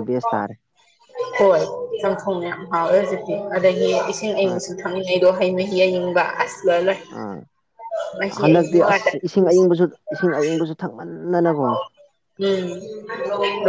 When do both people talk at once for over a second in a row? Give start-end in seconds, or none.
8.2-9.6